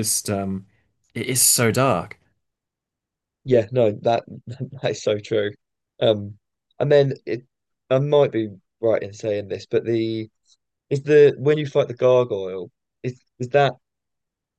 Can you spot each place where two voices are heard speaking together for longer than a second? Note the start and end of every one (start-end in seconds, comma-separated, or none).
none